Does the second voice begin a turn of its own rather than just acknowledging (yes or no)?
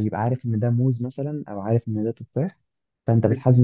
no